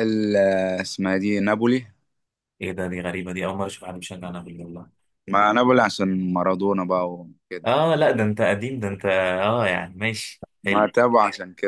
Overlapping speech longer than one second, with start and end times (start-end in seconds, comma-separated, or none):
none